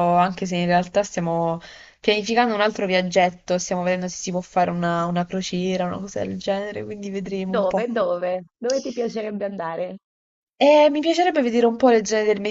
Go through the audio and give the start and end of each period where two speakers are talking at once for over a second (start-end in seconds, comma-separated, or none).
none